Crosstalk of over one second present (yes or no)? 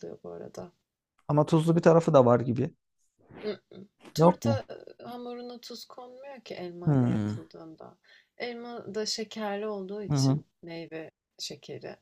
no